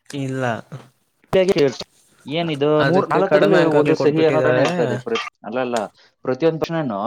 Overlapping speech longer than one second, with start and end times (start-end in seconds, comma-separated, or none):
2.9-4.7